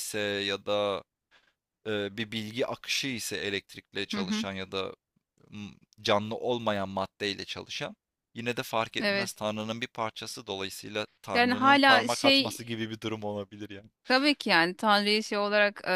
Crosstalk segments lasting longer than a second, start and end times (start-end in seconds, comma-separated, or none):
11.3-12.6